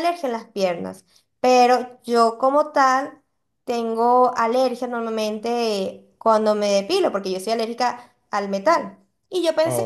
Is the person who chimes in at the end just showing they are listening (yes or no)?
yes